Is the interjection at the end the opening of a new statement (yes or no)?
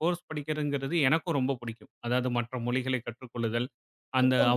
no